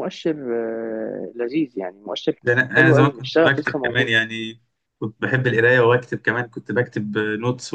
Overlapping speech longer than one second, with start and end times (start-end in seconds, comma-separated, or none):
2.4-4.1